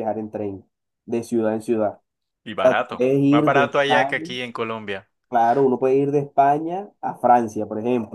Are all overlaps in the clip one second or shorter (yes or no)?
no